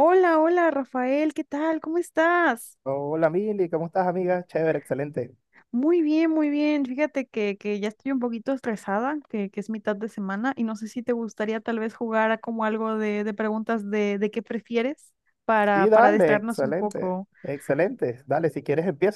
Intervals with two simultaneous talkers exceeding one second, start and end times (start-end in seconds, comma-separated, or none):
15.7-17.3